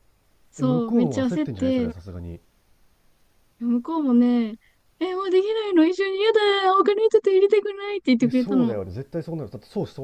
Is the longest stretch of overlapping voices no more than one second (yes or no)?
no